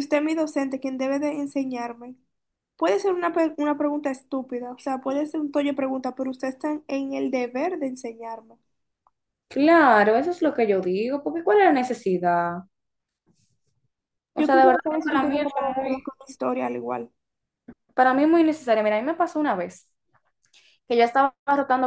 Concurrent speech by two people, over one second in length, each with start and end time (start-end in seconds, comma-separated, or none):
14.4-16.1